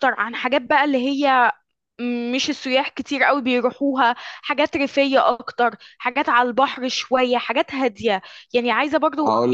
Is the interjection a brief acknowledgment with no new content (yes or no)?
no